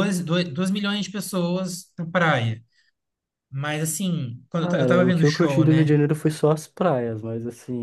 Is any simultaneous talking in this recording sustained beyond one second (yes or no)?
yes